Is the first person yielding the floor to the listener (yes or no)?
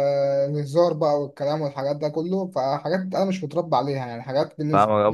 yes